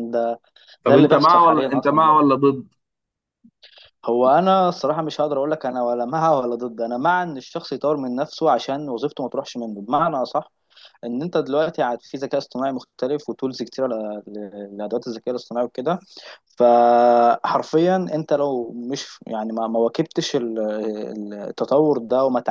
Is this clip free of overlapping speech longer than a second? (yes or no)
no